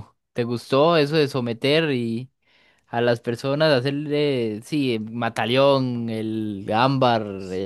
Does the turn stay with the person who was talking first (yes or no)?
no